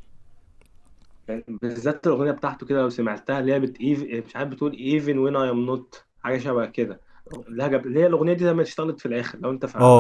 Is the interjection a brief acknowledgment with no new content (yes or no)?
no